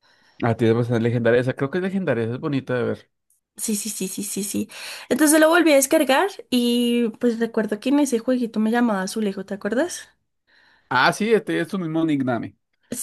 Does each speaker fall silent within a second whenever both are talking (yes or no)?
yes